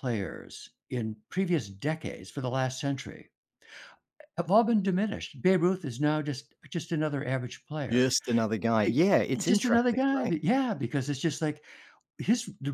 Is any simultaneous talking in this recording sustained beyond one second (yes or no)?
yes